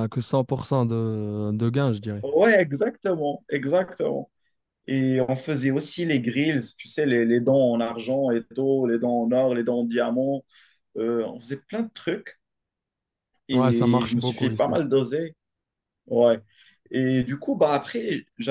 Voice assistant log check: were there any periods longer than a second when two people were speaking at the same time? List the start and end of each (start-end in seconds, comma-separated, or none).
13.5-14.7